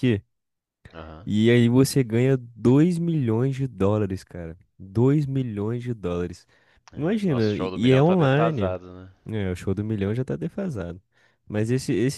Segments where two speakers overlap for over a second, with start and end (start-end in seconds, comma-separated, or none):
7.0-8.7